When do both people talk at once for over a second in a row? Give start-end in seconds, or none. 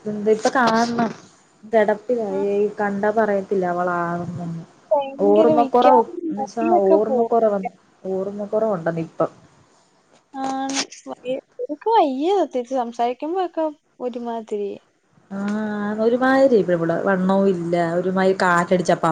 5.3-7.3